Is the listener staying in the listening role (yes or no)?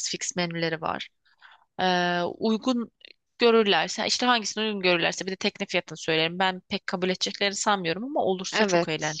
no